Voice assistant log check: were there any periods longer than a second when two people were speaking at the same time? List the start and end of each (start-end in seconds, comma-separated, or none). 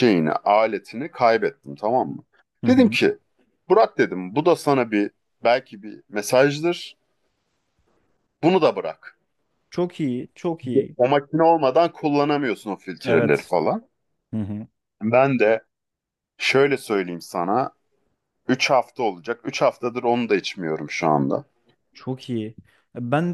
none